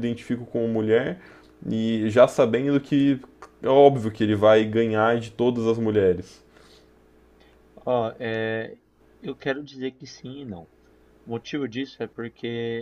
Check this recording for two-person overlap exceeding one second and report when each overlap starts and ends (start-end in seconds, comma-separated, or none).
none